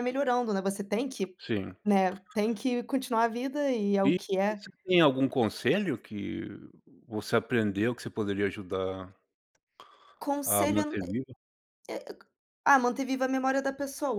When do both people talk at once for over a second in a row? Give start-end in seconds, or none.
none